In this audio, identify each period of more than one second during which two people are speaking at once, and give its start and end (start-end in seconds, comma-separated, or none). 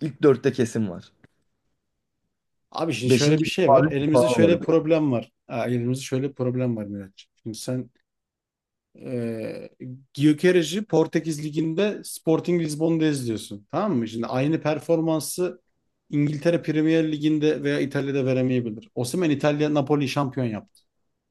3.0-4.6